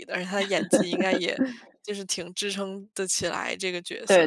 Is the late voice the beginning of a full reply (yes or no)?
yes